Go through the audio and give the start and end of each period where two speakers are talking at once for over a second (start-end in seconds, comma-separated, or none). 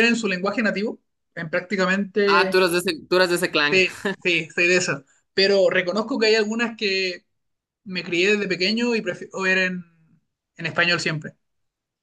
none